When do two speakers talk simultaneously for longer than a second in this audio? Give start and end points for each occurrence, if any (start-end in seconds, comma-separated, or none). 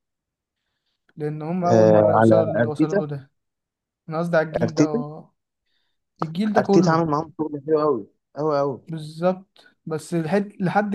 1.6-3.0